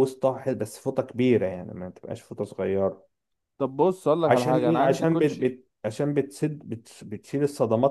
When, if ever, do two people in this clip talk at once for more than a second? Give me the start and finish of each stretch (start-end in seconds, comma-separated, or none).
4.3-5.6